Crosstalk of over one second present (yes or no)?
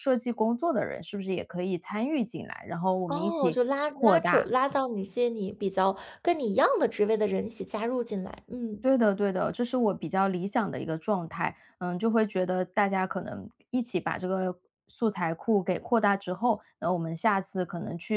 yes